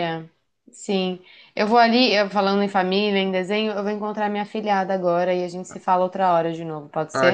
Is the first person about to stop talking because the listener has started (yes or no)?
yes